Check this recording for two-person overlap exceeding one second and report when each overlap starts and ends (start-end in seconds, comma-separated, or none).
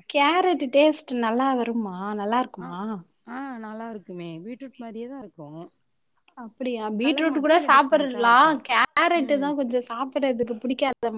none